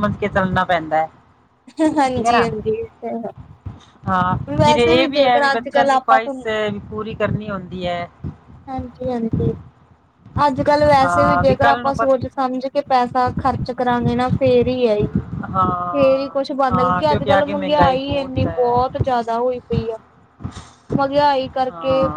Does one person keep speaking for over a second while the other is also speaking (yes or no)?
yes